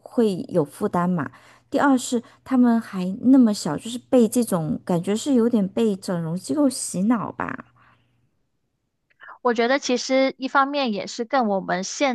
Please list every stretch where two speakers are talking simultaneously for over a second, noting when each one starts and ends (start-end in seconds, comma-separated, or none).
none